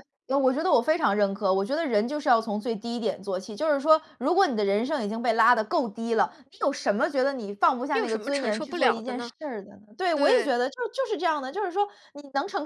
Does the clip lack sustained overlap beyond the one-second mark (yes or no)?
no